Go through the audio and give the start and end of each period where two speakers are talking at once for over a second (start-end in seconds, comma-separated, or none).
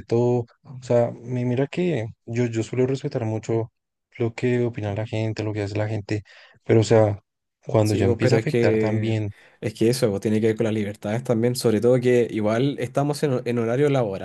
7.8-9.2